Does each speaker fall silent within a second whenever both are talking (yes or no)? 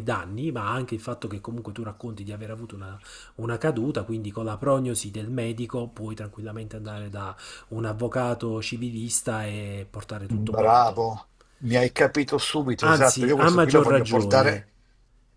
no